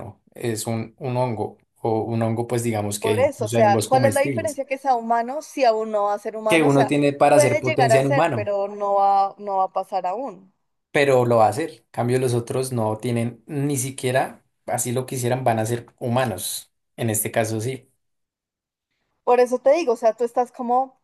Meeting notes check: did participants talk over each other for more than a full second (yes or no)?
yes